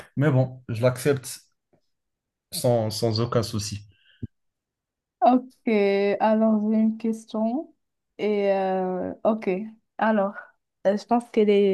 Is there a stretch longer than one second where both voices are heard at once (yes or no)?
no